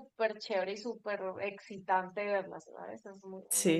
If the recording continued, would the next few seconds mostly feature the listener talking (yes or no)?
yes